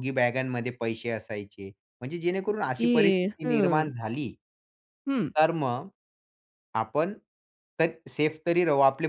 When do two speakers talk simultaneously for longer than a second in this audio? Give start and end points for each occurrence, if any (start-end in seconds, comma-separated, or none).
2.5-3.9